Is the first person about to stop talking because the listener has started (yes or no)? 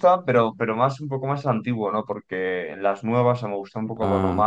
no